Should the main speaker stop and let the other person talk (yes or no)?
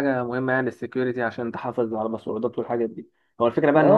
no